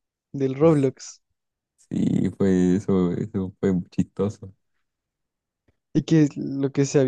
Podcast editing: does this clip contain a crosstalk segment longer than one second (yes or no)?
no